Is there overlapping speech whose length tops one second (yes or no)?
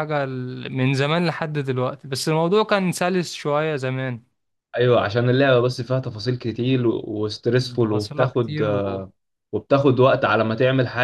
yes